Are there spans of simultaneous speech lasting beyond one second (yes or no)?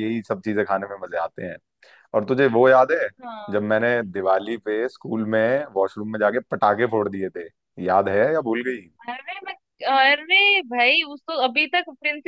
no